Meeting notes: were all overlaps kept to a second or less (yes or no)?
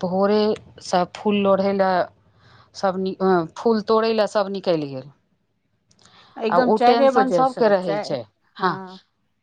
no